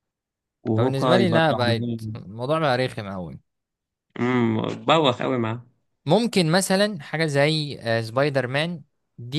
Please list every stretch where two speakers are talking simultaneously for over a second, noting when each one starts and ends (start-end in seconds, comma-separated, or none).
0.8-2.1